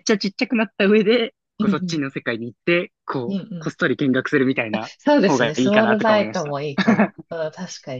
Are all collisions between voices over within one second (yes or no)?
no